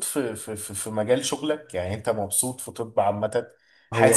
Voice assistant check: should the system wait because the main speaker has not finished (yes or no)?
yes